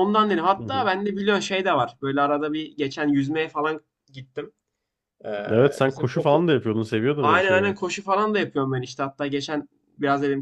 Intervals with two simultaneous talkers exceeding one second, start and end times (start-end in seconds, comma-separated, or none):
none